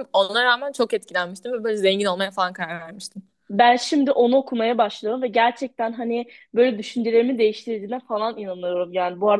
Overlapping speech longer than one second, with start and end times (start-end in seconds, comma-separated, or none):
none